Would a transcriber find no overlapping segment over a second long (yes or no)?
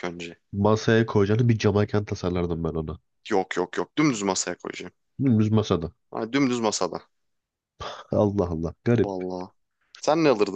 yes